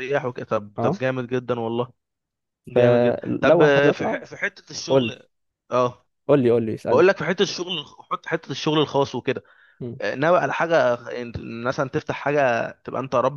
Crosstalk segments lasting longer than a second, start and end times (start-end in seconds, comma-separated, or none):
2.7-4.2